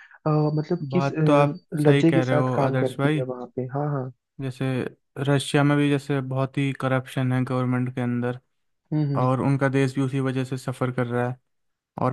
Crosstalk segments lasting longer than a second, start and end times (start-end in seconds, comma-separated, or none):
0.9-3.3